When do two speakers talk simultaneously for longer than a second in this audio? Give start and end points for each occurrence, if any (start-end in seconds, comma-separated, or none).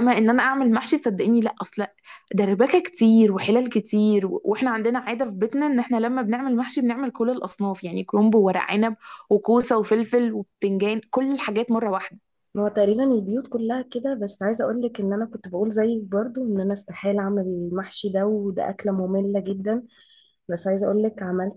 none